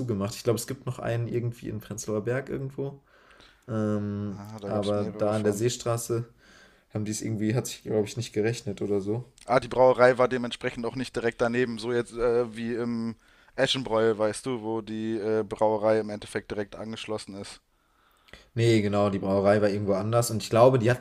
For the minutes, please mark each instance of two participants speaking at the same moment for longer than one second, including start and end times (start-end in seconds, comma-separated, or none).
4.3-5.7